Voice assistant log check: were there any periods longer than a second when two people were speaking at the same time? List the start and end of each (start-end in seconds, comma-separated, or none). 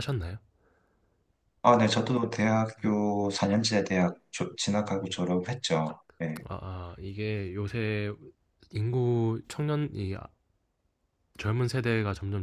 none